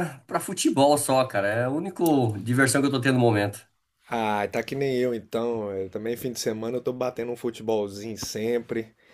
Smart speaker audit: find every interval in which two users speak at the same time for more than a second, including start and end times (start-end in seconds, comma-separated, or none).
none